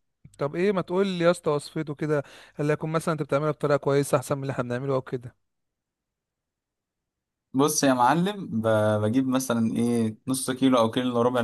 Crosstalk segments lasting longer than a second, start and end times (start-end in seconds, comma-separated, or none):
none